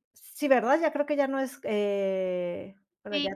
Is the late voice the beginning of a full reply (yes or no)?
yes